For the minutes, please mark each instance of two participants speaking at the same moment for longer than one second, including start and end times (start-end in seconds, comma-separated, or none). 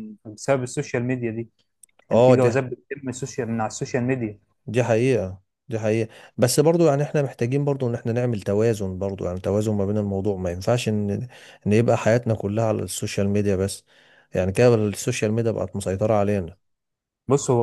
none